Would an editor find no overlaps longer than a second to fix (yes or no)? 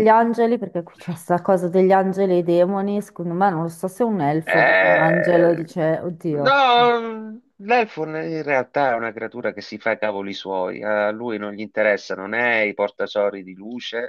no